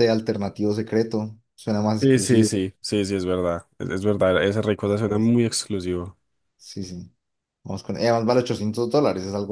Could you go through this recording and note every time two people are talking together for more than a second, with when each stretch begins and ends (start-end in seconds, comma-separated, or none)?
none